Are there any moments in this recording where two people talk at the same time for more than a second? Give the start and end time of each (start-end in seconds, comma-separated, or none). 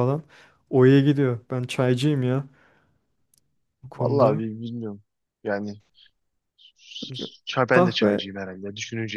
none